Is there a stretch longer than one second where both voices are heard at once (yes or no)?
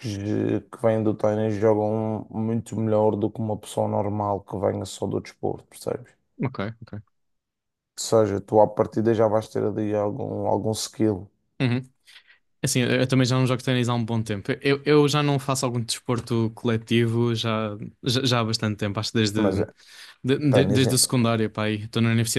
no